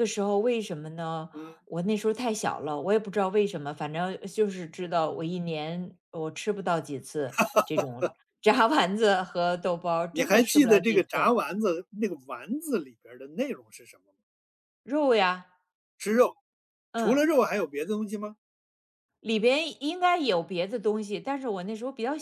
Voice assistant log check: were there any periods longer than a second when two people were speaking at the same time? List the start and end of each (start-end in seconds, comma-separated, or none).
10.1-11.3